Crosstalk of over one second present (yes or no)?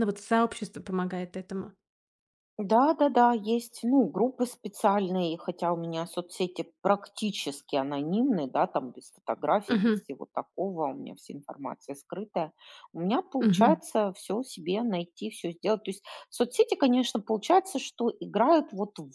no